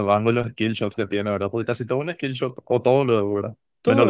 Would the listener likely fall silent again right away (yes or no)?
no